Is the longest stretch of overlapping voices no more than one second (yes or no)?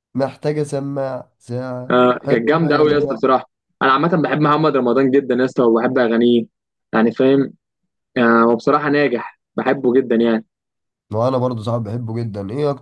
no